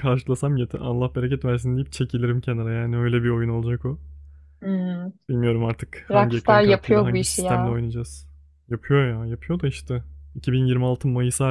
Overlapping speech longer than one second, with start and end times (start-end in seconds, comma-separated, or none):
6.1-7.8